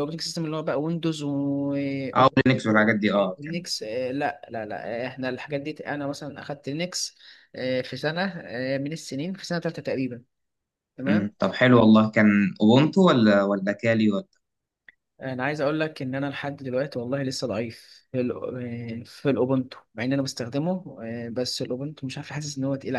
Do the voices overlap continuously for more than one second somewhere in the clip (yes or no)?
no